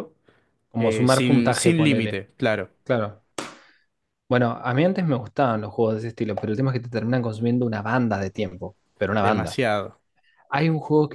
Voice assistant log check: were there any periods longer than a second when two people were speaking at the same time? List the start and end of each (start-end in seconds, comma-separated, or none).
0.8-2.2